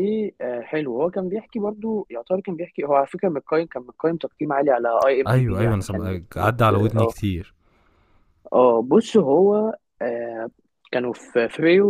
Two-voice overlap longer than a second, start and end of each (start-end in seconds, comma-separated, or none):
5.3-7.2